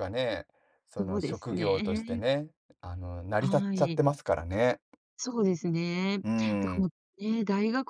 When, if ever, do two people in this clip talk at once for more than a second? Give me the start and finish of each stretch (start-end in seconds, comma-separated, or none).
1.0-2.2